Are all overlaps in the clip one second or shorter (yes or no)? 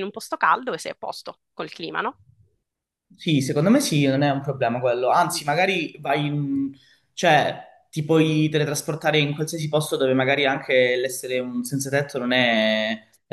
yes